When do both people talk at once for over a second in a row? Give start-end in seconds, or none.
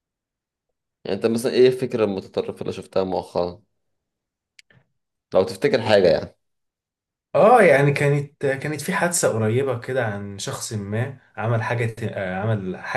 none